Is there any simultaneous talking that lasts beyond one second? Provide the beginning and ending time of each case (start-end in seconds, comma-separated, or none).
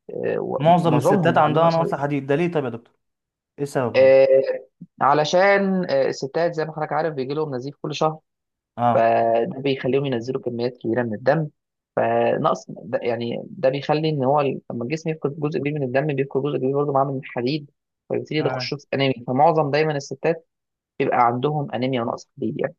0.6-1.8